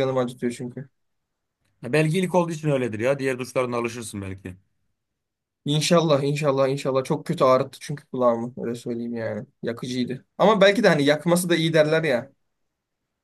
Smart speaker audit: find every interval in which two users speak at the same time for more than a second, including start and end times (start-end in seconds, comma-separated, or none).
none